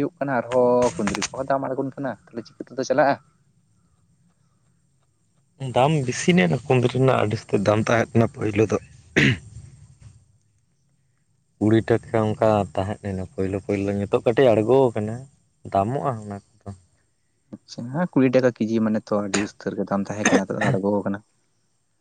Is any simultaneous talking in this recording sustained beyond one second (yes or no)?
no